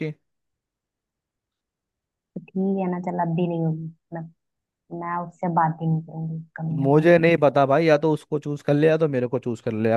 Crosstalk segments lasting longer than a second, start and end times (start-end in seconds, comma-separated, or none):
none